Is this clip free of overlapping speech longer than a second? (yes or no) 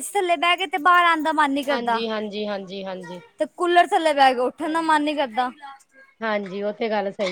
yes